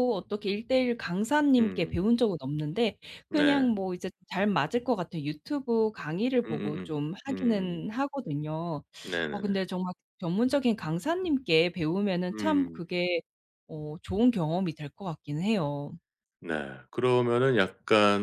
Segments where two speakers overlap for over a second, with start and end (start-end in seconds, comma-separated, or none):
6.5-7.9